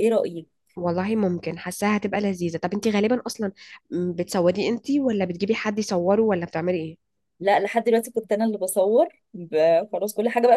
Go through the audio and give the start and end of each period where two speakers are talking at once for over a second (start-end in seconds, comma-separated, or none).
none